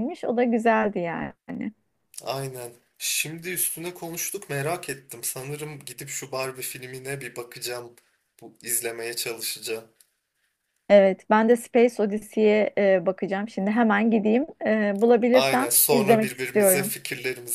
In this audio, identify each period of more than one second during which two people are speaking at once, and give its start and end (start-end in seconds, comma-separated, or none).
15.3-16.9